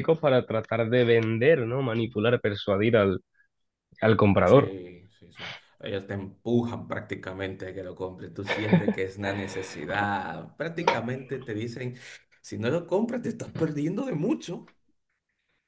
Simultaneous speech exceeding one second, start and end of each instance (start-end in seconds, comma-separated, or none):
none